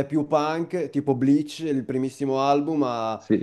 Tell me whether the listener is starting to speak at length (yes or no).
no